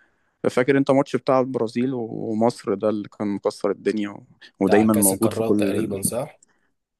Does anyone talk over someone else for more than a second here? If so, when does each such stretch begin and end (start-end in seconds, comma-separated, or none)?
4.7-5.9